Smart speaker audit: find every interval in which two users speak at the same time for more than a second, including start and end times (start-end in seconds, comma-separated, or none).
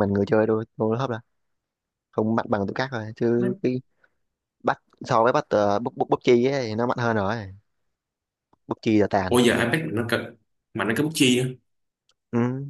none